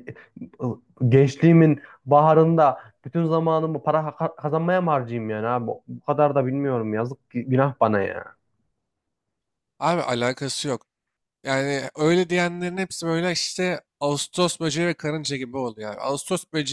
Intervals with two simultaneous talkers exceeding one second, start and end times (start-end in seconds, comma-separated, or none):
none